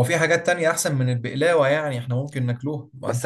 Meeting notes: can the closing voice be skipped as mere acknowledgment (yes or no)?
no